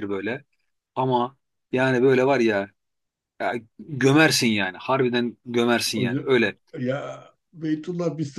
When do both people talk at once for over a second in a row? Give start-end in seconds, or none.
none